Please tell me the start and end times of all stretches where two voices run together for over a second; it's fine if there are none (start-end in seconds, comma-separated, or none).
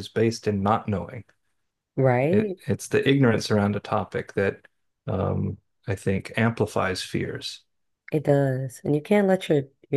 none